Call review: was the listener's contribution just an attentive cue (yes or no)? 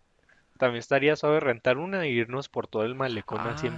no